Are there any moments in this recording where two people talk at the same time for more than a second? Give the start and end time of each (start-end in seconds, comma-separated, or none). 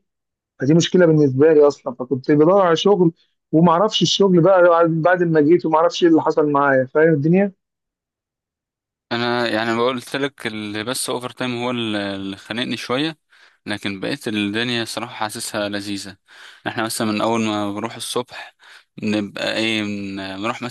none